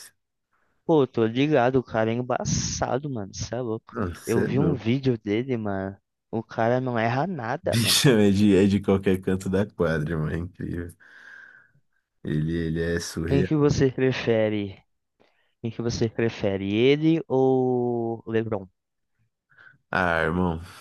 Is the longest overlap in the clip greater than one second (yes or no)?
no